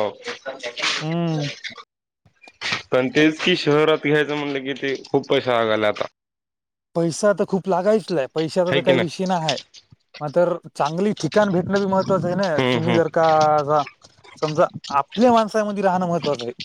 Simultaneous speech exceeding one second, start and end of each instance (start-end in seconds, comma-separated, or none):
none